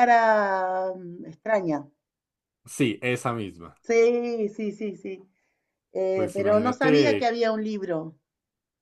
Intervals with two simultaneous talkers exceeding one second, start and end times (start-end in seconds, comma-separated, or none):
6.1-7.3